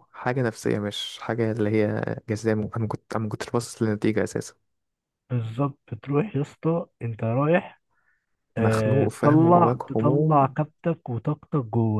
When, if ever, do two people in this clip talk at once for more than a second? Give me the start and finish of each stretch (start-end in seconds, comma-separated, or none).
8.6-10.5